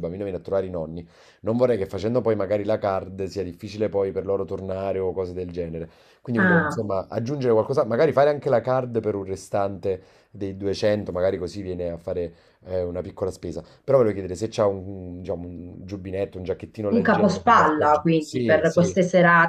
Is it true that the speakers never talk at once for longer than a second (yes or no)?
no